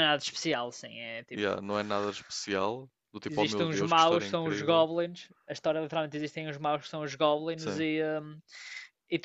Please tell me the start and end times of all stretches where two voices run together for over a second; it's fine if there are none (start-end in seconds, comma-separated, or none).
3.3-4.9